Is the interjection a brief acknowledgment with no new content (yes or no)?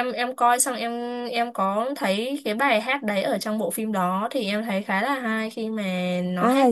no